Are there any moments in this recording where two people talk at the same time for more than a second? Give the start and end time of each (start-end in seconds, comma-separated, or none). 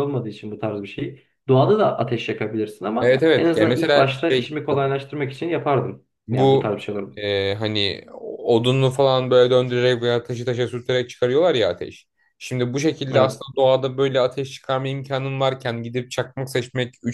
3.0-4.5